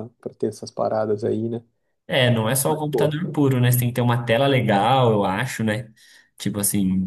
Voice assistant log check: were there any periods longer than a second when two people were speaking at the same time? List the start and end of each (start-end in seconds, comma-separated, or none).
none